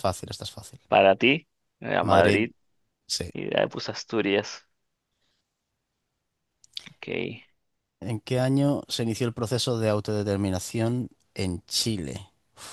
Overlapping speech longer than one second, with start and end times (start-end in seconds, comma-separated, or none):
none